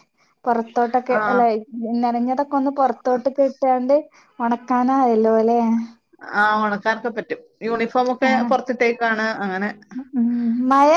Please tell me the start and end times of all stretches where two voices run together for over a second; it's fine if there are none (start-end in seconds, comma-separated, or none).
none